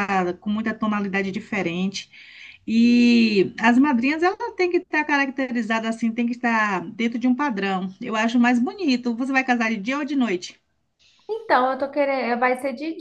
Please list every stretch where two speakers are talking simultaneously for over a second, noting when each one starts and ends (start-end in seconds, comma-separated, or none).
none